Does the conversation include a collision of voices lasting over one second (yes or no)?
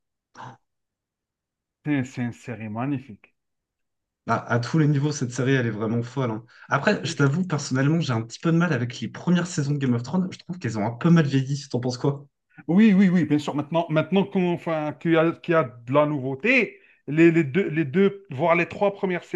no